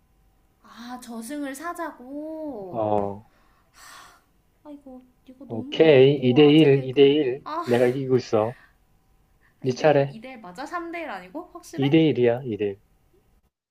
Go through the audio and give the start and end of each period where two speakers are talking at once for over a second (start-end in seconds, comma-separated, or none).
5.5-7.1